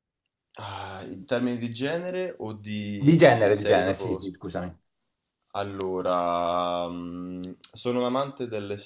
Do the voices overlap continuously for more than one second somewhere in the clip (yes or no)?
yes